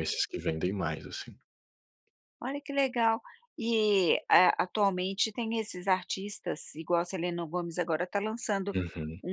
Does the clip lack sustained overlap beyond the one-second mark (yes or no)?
yes